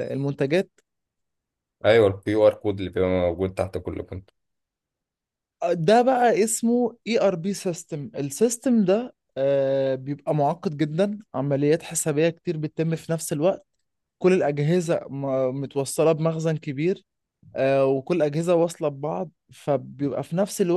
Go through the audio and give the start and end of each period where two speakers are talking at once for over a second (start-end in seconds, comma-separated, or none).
none